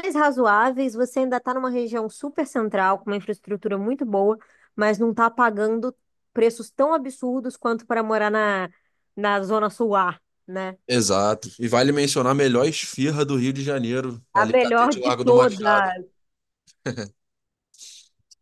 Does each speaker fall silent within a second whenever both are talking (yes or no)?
no